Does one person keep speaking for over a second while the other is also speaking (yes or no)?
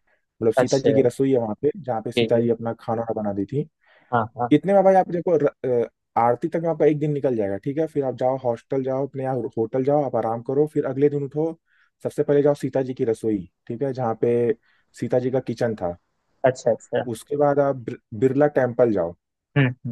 no